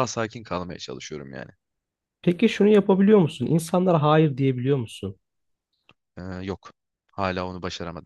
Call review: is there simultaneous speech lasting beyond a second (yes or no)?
no